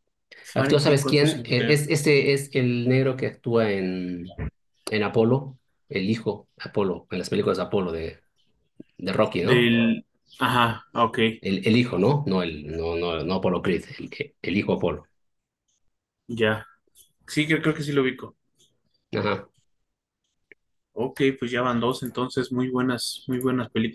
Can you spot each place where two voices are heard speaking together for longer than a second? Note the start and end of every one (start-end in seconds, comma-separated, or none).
0.5-2.0